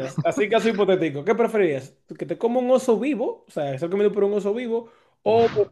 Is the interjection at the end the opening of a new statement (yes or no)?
no